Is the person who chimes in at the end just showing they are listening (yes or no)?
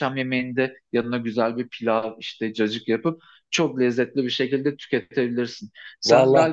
yes